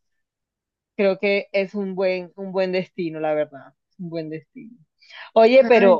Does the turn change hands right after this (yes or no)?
no